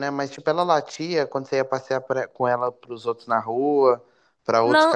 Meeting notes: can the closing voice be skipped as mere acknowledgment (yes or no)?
no